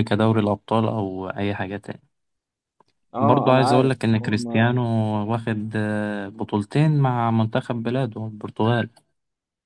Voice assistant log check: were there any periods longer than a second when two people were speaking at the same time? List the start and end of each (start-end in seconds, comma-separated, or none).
3.2-4.7